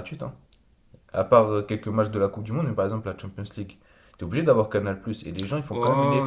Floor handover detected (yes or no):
yes